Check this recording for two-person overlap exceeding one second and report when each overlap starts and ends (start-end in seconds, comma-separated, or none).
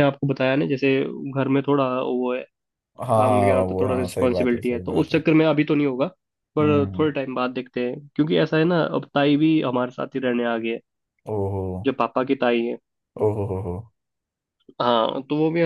3.1-5.2